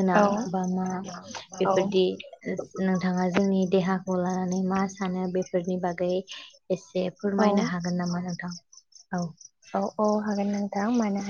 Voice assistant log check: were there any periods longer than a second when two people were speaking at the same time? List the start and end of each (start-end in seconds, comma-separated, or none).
none